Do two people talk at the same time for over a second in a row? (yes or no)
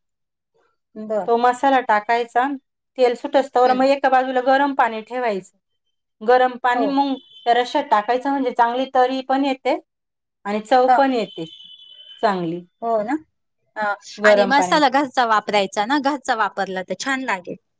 no